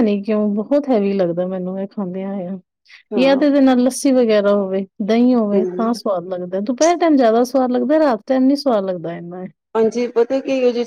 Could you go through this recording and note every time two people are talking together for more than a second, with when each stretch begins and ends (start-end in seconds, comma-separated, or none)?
none